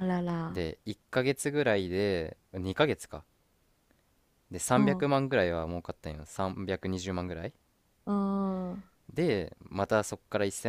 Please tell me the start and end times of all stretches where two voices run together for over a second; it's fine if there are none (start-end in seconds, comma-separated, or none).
none